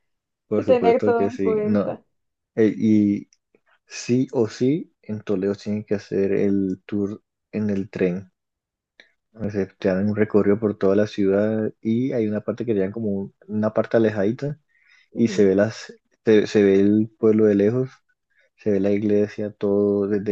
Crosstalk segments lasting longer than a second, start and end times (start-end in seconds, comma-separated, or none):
0.6-2.0